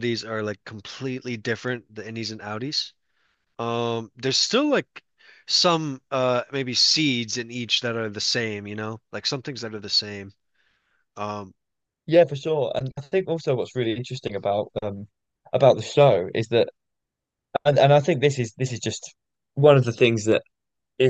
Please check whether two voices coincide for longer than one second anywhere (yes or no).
no